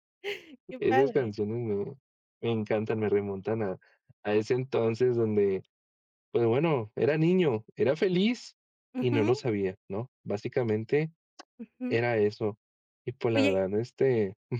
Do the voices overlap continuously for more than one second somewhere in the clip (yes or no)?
no